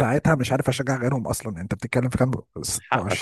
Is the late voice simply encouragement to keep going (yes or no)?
yes